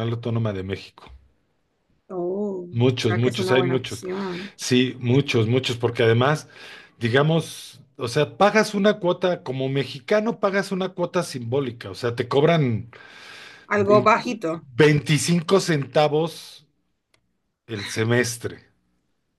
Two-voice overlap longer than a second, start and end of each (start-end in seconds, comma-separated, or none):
2.7-4.0